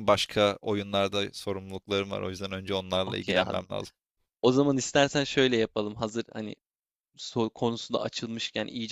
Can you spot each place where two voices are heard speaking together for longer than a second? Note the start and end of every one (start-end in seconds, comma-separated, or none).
none